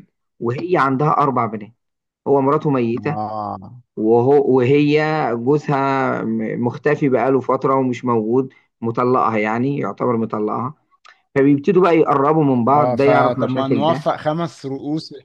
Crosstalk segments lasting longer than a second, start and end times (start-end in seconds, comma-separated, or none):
12.7-14.0